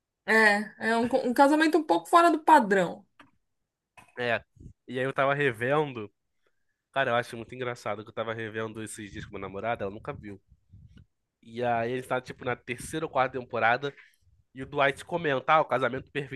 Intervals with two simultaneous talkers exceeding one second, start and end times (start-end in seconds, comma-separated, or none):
none